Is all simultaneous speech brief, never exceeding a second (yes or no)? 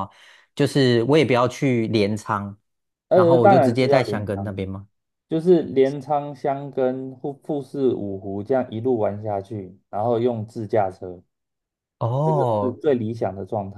no